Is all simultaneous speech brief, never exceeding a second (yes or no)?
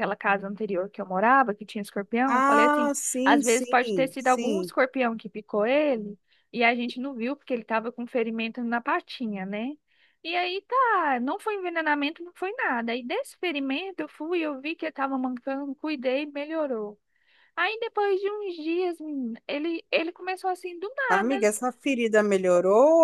no